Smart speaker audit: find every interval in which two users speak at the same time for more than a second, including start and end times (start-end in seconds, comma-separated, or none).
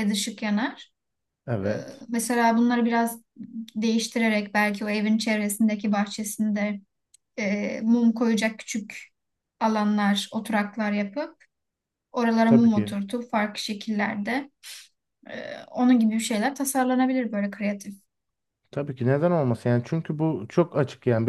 none